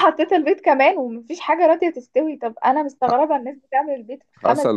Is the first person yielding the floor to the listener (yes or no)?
yes